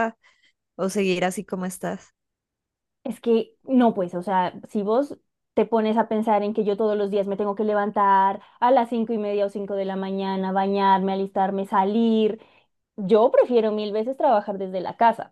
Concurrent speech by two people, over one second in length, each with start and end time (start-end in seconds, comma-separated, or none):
none